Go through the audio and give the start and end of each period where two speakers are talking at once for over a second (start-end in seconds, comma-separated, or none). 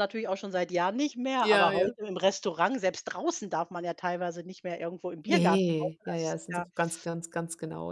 5.3-6.7